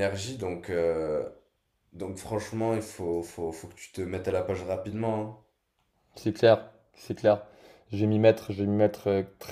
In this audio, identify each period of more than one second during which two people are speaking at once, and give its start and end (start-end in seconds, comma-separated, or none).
none